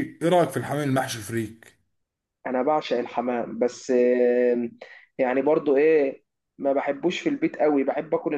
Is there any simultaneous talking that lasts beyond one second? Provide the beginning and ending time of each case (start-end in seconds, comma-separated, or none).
none